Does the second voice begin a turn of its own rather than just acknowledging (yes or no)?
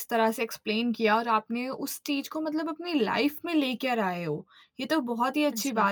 no